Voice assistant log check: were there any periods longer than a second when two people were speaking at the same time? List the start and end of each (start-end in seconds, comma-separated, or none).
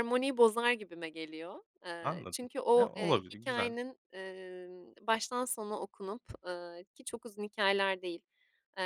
2.0-3.7